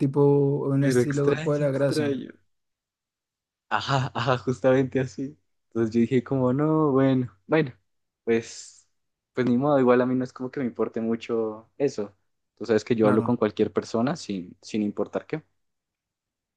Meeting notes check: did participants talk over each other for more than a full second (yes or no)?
yes